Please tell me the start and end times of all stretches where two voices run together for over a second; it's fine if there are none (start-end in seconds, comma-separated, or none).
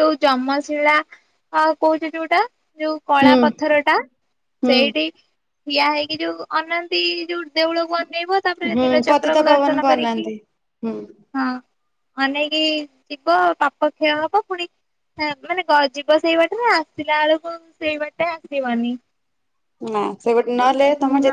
8.7-10.3